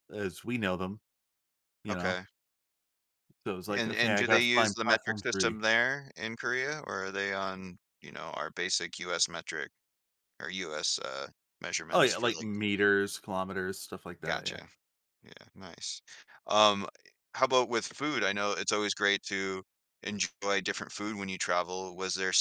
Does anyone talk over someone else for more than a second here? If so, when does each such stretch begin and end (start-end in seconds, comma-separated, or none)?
3.7-5.6